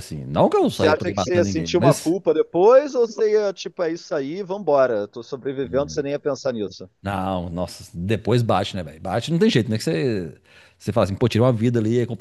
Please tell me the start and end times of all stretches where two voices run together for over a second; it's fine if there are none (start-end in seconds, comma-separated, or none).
0.6-2.1